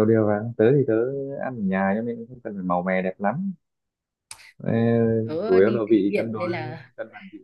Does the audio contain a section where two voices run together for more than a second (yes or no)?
yes